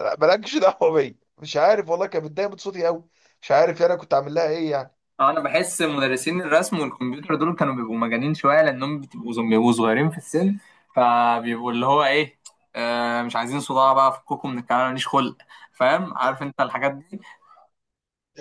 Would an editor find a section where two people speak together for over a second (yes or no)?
no